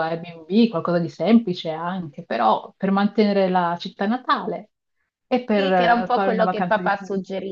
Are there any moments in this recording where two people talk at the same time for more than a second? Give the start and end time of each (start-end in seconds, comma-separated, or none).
5.6-6.9